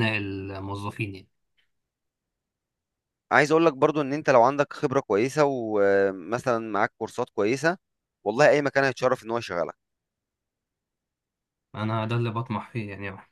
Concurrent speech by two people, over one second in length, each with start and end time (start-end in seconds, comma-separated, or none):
none